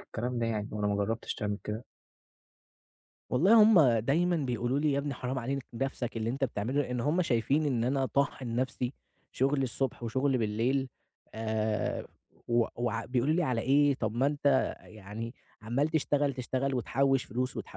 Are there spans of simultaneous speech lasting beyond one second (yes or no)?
no